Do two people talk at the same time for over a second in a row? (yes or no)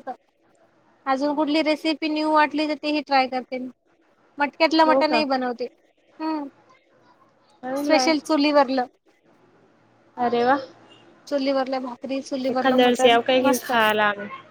yes